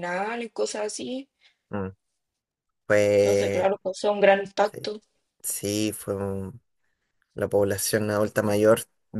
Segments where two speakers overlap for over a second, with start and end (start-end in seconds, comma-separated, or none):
none